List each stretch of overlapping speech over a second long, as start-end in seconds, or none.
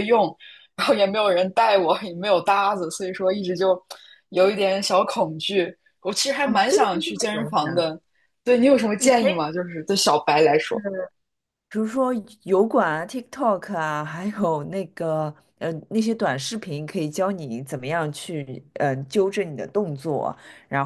6.4-7.9